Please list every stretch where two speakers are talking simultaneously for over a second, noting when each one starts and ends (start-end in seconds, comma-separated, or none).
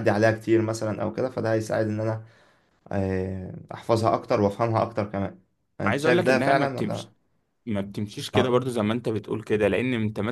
5.8-7.1